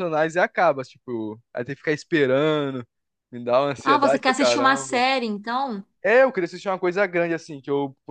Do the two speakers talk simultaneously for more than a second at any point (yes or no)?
yes